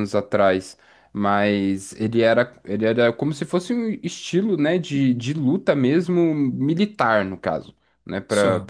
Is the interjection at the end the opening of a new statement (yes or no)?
no